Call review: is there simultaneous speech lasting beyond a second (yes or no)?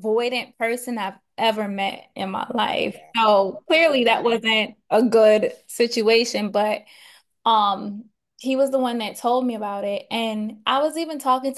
yes